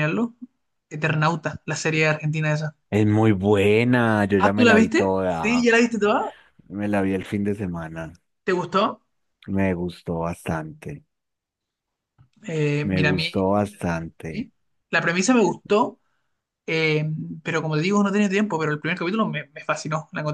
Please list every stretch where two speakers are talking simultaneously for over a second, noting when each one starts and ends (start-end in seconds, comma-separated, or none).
4.4-5.7, 12.8-14.5